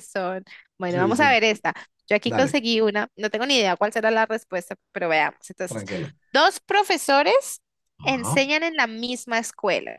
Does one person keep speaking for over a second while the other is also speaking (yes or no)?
no